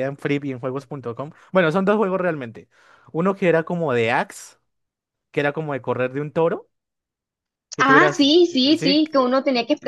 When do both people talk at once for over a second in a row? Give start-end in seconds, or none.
7.8-9.0